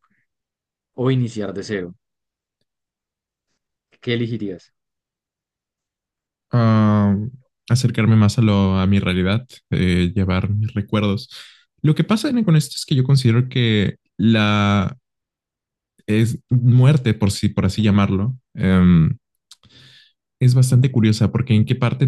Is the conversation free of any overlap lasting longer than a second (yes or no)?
yes